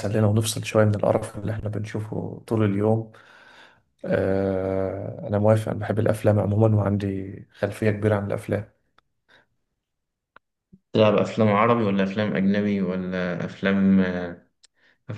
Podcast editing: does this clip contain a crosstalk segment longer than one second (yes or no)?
no